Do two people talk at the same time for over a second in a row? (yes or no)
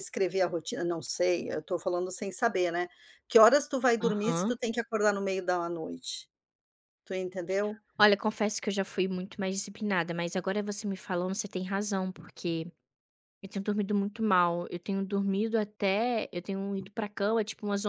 no